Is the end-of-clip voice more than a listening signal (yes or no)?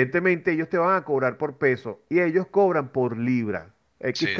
no